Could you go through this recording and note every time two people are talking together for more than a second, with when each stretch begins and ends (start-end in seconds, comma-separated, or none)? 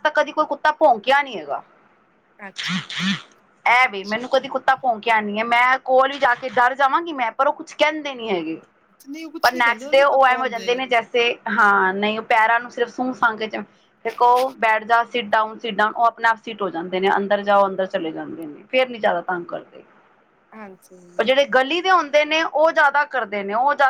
9.4-10.8